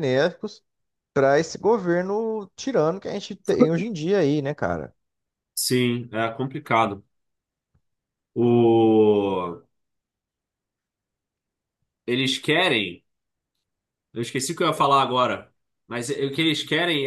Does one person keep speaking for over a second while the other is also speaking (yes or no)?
no